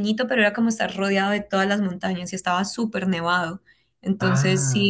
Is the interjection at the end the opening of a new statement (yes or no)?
no